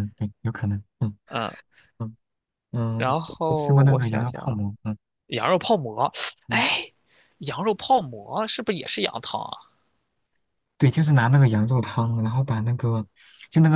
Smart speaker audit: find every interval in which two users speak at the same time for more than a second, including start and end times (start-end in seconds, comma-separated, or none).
3.0-4.6